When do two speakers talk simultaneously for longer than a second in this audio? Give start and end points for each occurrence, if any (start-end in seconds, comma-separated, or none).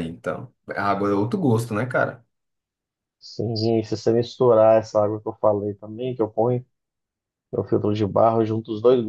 none